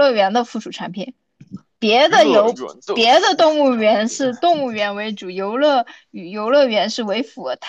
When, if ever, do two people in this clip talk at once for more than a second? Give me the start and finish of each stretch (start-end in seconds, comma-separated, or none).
2.1-4.2